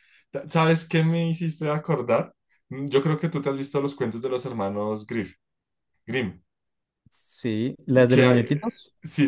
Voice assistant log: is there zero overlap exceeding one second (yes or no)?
yes